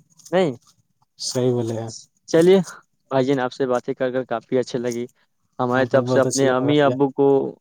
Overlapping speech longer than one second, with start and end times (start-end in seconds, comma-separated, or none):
5.7-7.0